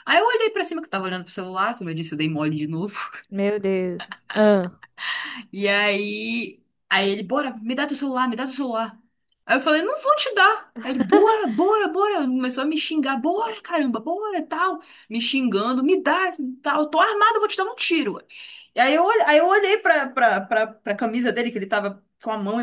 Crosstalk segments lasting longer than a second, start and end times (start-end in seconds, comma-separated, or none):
none